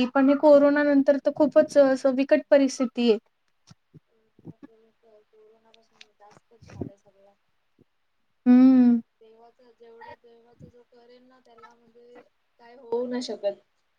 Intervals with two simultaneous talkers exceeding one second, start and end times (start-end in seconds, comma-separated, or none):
none